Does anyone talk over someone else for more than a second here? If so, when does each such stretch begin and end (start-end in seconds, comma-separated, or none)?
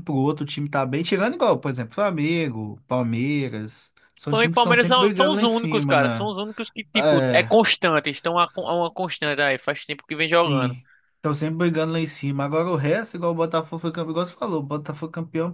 4.3-6.3